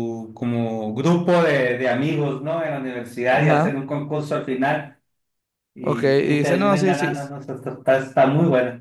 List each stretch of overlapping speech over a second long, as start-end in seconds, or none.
5.8-7.3